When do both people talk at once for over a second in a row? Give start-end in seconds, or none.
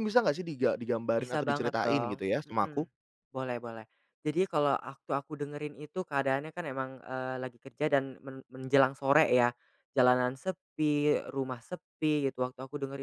1.2-2.9